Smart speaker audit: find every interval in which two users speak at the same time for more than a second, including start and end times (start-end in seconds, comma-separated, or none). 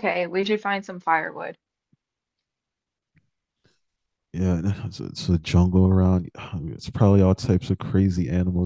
none